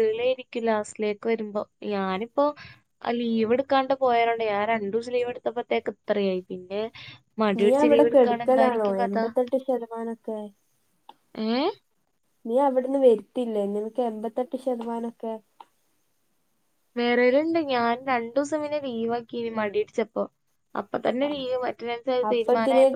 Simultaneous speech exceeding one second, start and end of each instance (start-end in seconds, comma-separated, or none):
7.6-9.2